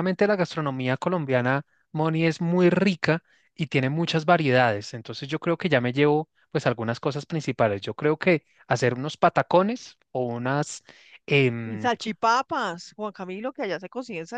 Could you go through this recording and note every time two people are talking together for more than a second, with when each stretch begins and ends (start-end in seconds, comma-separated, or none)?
none